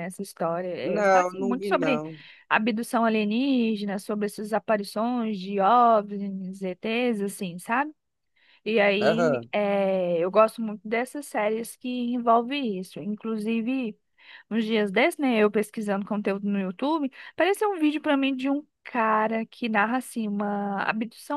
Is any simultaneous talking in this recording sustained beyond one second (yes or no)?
yes